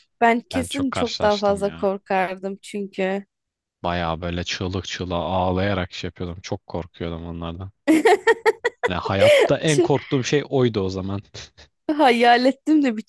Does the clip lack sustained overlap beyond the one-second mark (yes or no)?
no